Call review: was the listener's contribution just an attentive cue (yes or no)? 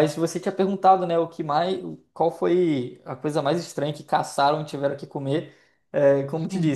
yes